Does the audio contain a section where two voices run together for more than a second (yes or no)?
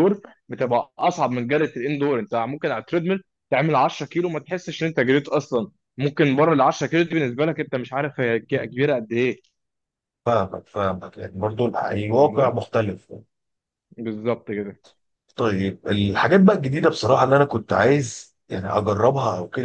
no